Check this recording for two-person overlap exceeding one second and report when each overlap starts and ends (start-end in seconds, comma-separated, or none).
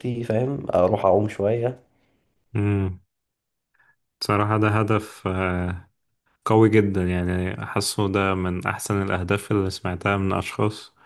none